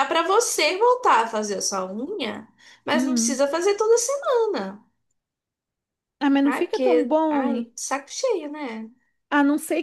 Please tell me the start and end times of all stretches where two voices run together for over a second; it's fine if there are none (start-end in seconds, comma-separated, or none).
6.4-7.7